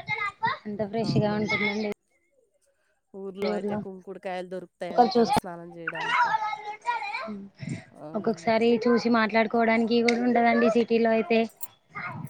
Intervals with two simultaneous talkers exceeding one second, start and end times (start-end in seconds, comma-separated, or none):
none